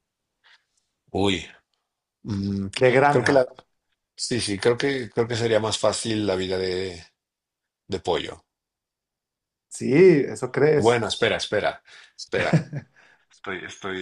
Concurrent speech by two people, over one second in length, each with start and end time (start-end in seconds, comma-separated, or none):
none